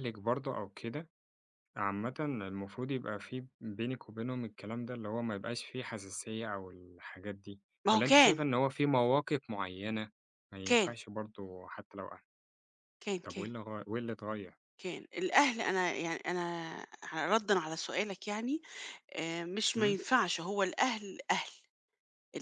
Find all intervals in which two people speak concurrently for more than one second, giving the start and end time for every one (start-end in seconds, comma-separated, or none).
none